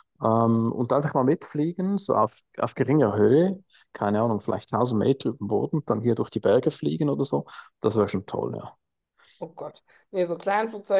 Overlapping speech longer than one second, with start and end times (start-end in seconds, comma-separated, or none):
none